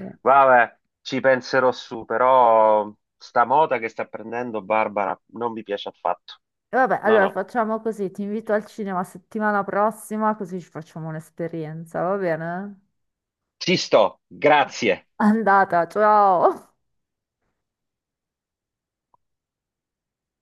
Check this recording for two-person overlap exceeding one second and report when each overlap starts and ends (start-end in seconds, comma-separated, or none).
none